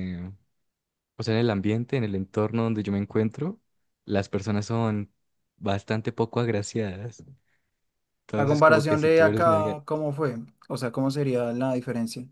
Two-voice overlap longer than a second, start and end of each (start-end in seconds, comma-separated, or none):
8.3-9.7